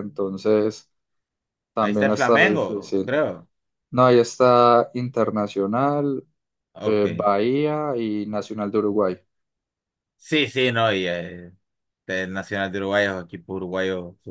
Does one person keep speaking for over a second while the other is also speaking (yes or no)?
yes